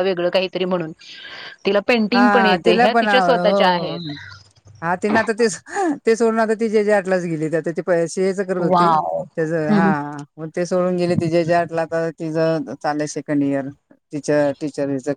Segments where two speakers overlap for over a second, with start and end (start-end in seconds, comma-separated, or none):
2.1-4.1